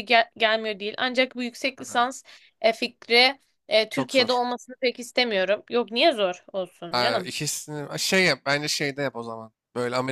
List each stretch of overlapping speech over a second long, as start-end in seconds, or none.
none